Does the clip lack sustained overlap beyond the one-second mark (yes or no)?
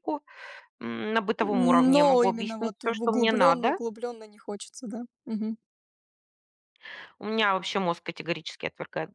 no